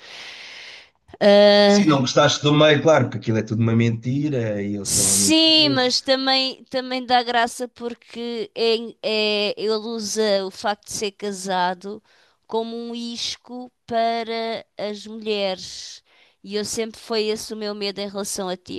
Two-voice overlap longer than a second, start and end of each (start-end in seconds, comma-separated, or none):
4.8-6.1